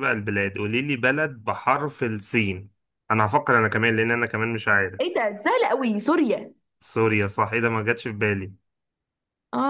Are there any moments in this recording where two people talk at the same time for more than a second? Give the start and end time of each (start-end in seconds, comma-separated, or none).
none